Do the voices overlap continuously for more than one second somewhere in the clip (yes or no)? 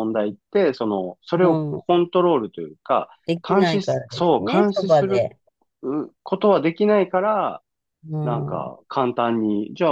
yes